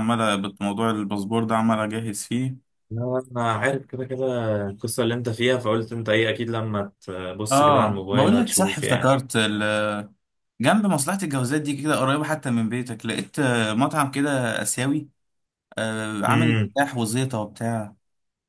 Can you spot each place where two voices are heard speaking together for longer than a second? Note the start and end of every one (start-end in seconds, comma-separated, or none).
7.5-9.1